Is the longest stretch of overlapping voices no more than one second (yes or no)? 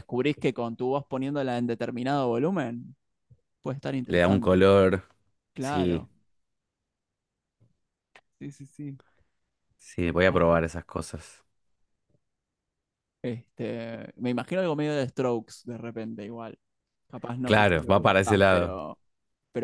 no